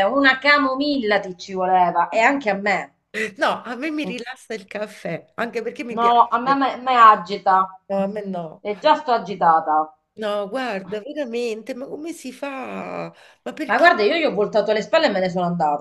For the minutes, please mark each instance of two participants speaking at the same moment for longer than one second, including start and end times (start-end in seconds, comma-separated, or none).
none